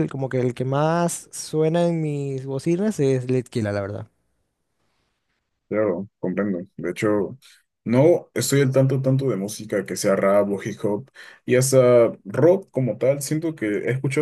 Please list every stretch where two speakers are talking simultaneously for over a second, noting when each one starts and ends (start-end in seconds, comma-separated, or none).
none